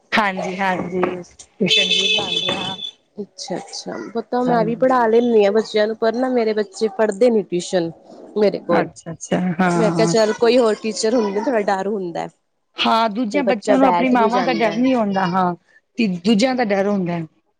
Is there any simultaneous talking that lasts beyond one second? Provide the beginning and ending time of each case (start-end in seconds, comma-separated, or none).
13.3-14.8